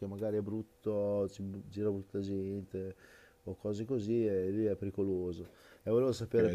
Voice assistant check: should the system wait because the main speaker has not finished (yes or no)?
no